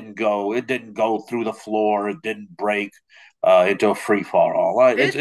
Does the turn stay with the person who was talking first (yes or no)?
no